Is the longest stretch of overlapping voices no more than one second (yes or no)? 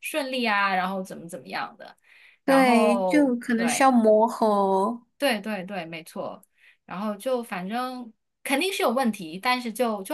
no